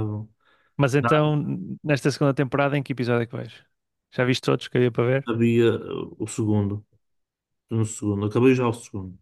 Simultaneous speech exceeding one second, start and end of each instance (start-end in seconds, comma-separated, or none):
none